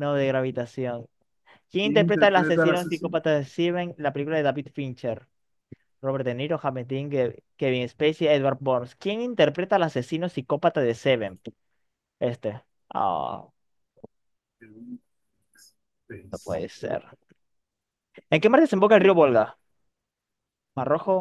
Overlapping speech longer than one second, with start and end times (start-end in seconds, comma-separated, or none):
1.8-3.2